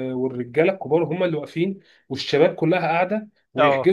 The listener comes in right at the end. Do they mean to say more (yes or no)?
no